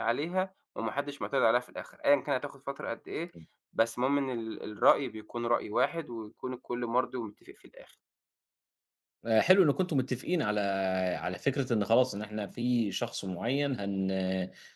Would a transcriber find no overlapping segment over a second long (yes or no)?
yes